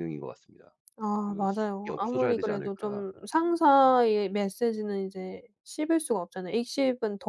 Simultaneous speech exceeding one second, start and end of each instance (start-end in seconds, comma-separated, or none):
1.2-3.1